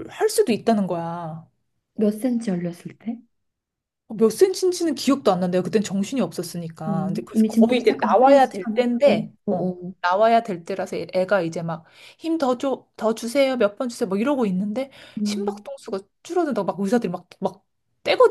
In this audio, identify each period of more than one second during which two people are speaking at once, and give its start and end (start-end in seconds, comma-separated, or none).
6.9-9.9